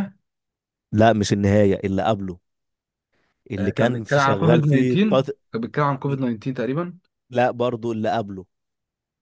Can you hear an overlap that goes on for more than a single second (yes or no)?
yes